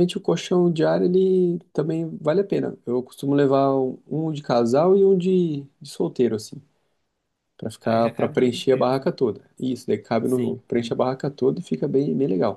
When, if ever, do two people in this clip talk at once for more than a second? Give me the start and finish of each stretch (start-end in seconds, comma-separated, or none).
7.8-9.1